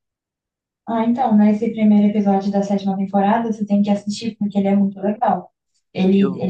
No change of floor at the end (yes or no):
yes